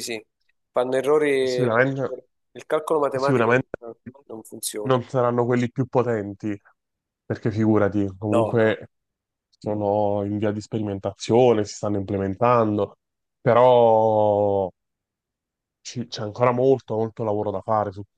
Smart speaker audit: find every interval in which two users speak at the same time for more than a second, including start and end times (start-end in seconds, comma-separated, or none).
none